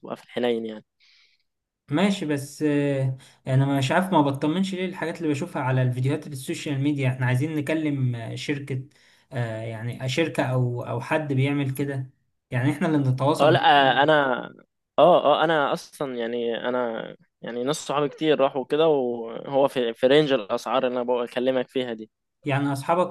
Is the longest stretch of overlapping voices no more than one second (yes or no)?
yes